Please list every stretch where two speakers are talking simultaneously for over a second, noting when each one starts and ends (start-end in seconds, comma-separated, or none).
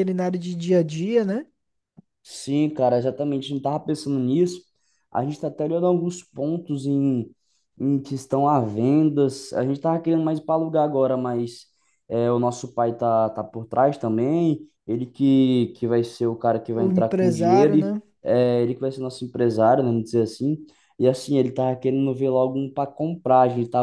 16.8-18.0